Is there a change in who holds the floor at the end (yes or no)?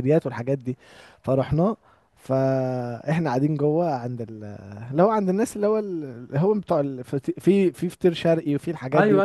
yes